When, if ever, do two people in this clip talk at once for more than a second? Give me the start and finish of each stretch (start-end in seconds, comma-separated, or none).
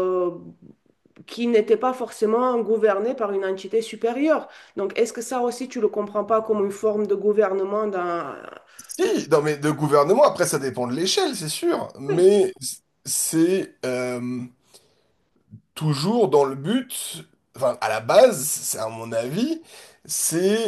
none